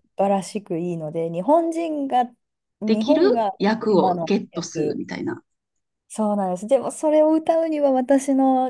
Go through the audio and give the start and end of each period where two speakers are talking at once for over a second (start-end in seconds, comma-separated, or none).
2.9-5.0